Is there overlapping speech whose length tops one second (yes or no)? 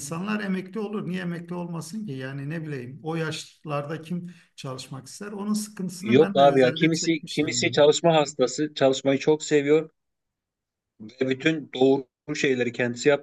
yes